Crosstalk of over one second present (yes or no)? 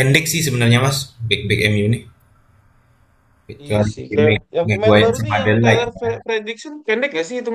yes